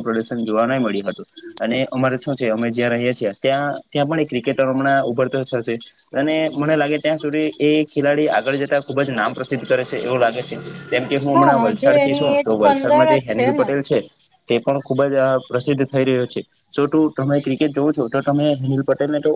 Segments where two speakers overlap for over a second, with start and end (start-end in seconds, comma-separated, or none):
11.3-13.7